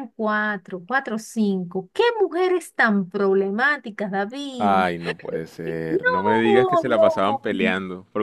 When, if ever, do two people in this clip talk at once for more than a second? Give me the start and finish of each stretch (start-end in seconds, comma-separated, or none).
5.9-7.4